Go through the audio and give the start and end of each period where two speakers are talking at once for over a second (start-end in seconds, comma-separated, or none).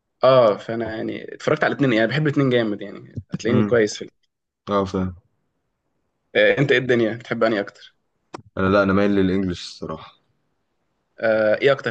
none